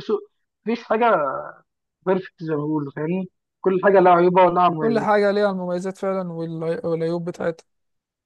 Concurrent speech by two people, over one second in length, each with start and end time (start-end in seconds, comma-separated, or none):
none